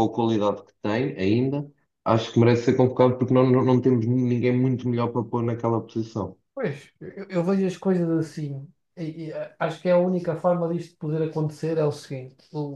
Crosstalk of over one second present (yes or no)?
no